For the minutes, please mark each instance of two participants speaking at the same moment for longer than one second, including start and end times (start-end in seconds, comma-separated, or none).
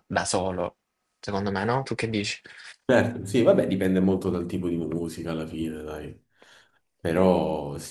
none